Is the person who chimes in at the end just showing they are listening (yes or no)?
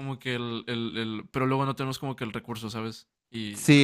no